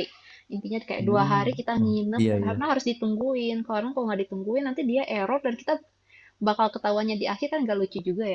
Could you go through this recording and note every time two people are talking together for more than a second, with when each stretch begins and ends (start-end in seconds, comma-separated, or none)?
1.0-2.7